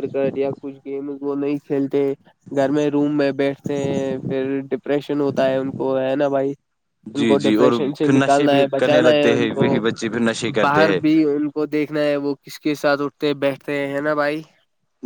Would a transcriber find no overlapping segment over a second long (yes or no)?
no